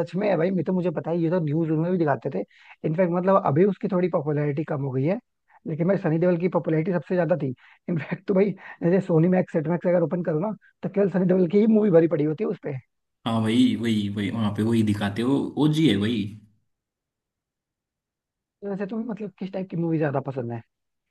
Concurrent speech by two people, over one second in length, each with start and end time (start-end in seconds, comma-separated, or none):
none